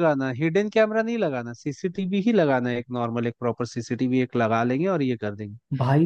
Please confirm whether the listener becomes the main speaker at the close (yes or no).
yes